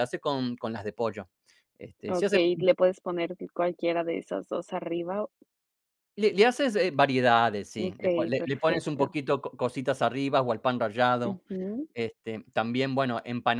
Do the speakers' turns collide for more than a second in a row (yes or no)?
yes